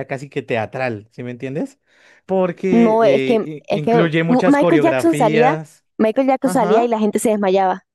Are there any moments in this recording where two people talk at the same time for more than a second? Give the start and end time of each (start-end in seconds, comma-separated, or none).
2.7-5.5